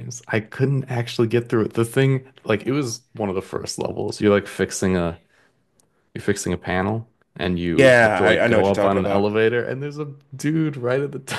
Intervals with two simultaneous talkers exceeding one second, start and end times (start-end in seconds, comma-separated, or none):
7.7-9.3